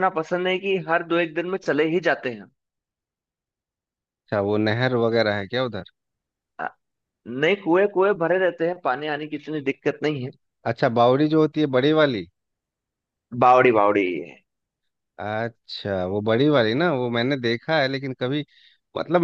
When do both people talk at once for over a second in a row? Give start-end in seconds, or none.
none